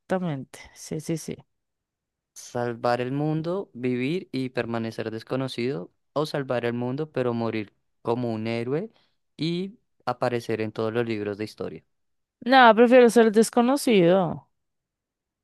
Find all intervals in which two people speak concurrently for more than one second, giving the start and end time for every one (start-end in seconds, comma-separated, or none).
none